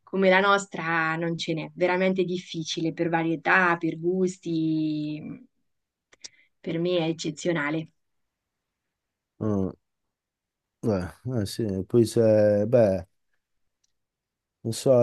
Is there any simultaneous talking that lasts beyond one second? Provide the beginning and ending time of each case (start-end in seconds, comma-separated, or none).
none